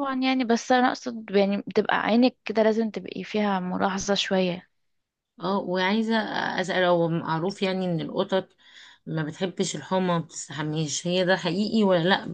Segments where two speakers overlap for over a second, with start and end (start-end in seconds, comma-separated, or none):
none